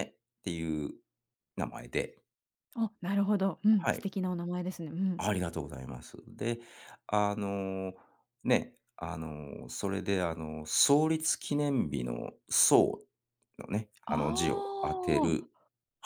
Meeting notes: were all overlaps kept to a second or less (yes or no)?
no